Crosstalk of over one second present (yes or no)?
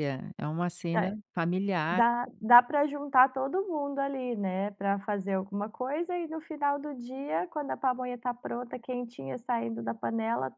no